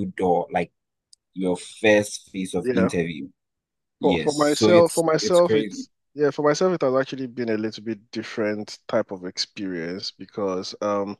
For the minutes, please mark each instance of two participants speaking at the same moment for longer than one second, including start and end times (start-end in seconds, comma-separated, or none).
4.0-5.9